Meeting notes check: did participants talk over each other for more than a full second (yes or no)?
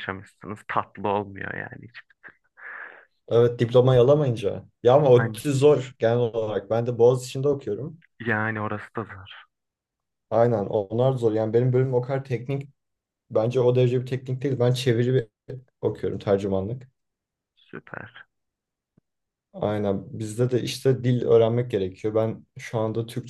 no